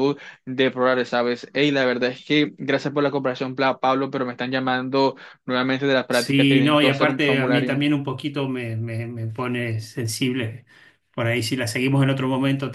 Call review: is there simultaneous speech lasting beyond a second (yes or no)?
yes